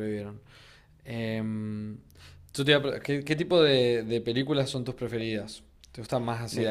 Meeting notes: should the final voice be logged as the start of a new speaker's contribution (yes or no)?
no